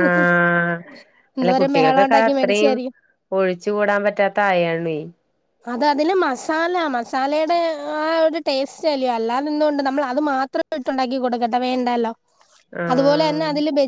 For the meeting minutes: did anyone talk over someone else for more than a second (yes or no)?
yes